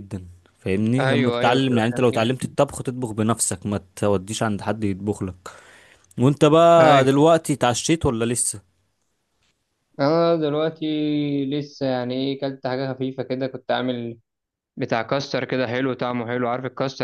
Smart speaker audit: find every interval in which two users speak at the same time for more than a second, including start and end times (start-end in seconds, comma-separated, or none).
1.0-2.3